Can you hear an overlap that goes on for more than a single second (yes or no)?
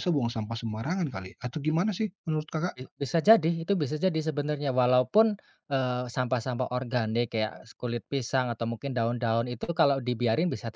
no